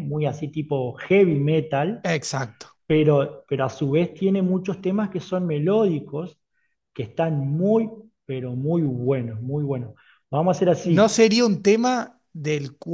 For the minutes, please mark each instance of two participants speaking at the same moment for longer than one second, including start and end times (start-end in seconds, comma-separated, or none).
none